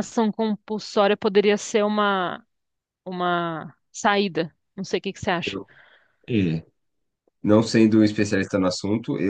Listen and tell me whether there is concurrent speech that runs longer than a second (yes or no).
no